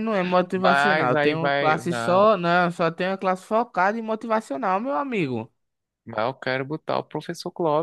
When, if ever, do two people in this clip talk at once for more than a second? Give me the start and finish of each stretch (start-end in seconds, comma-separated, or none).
0.5-2.3